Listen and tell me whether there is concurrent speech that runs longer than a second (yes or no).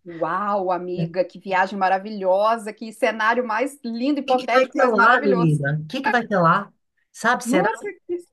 yes